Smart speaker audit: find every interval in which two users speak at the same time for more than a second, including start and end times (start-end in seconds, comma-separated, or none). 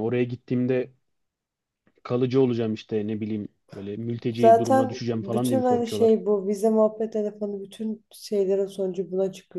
4.4-6.2